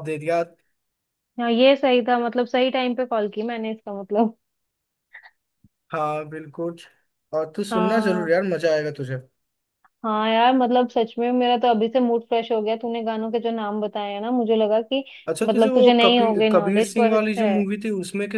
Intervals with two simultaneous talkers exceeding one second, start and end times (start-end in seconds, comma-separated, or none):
15.4-17.6